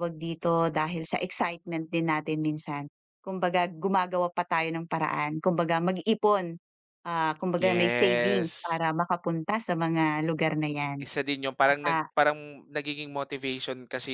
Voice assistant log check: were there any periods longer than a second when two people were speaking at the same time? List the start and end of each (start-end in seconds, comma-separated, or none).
7.6-8.8